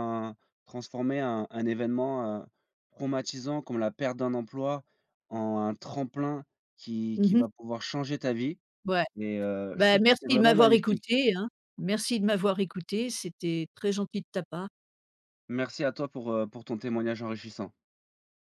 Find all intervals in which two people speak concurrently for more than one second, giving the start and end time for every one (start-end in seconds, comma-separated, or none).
9.8-11.2